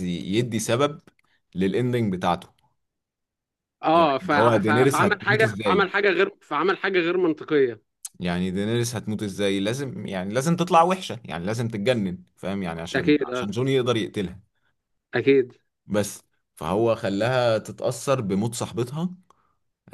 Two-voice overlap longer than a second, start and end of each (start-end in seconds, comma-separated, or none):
3.9-5.9